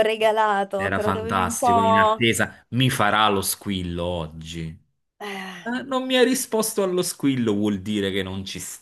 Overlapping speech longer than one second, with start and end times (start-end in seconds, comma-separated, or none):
0.8-2.3